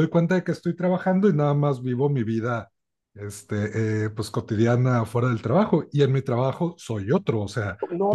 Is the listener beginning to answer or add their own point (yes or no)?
yes